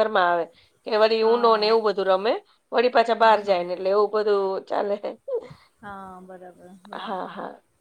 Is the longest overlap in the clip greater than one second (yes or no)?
no